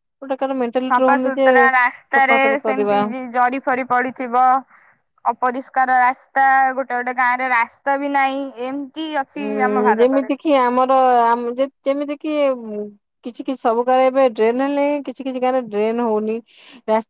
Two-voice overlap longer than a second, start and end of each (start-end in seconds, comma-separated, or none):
0.9-3.0